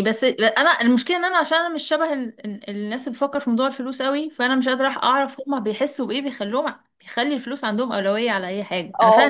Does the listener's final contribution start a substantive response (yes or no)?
yes